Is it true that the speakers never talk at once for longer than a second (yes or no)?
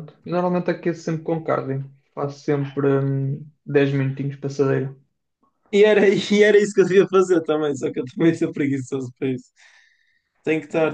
yes